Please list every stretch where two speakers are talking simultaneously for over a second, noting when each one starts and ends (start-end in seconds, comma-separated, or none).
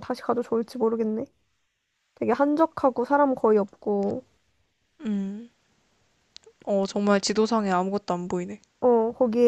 none